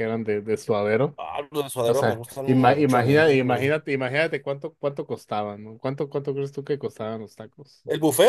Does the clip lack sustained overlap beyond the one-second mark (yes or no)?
no